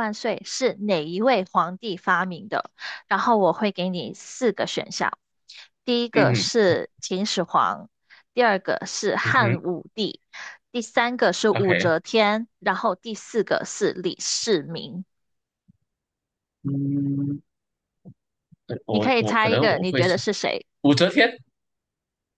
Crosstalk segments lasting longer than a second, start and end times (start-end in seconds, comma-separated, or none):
18.9-20.2